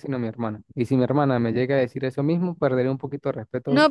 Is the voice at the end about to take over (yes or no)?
yes